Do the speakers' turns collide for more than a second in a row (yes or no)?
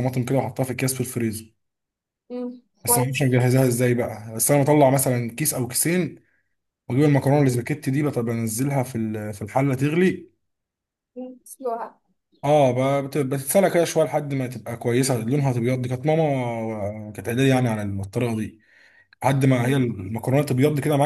no